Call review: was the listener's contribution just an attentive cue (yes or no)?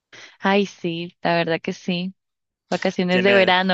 no